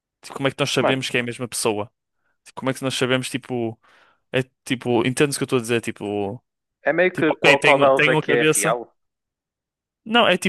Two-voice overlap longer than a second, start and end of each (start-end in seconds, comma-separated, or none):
7.1-8.8